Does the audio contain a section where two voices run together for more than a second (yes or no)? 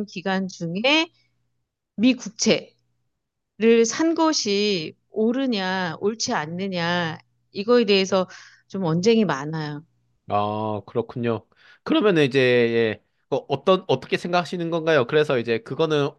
no